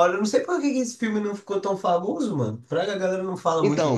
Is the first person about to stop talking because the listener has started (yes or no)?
yes